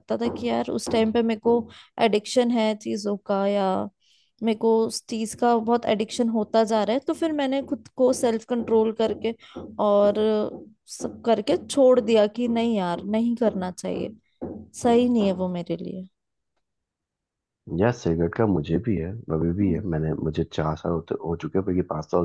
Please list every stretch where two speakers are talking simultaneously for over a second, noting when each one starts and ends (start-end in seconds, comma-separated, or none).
none